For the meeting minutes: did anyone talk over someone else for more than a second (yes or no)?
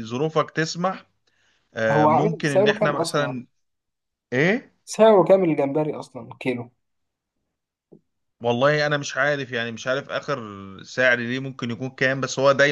yes